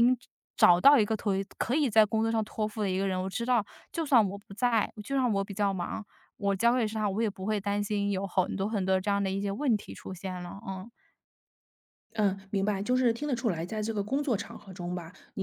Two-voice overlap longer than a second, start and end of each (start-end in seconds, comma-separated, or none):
none